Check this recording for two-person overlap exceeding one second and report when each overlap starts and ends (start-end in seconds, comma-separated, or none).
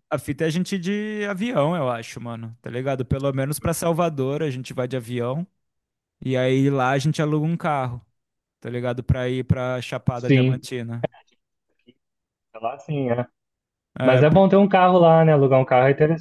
none